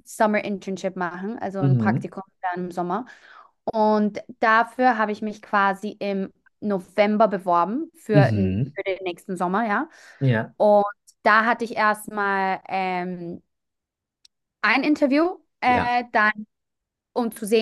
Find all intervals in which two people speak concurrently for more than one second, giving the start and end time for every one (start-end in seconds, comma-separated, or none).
none